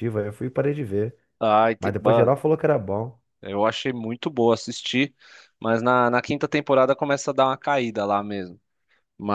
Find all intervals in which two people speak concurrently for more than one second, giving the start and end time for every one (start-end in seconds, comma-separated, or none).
none